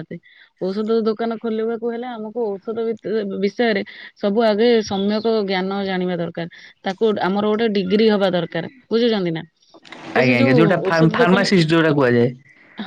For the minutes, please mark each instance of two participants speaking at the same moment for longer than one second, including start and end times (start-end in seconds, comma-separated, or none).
10.2-11.7